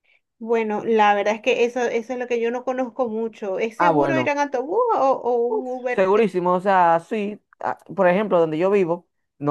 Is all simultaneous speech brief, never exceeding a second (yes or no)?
yes